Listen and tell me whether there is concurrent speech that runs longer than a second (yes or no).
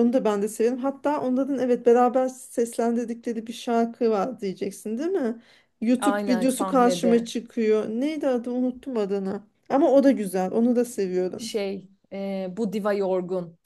yes